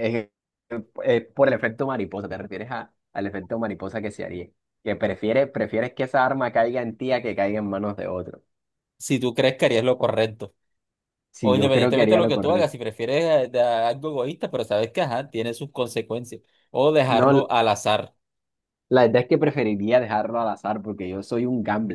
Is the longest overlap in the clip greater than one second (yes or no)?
yes